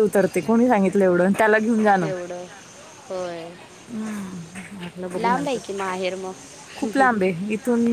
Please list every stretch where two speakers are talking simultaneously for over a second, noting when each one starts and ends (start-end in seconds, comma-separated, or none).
none